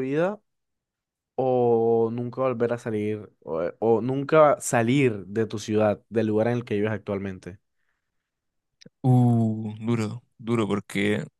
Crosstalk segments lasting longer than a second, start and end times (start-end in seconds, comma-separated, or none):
none